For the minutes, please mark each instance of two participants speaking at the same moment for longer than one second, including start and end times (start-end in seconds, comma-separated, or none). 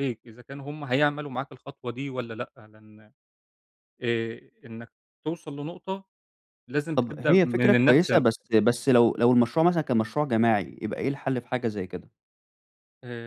6.9-8.2